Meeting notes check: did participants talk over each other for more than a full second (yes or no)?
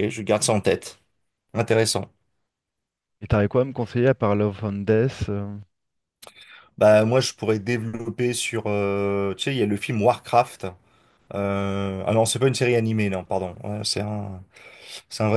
no